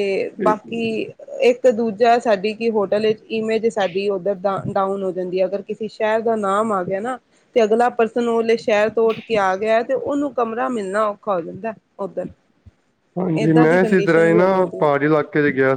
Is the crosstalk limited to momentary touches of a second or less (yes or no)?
no